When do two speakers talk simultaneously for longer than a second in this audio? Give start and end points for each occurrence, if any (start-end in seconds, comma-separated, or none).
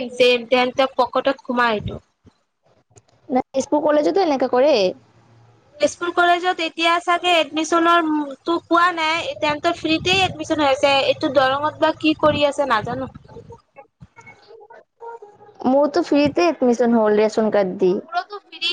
none